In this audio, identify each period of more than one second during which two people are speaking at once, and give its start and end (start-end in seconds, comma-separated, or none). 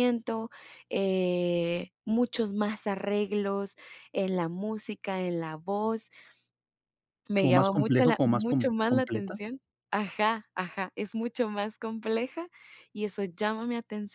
7.4-9.4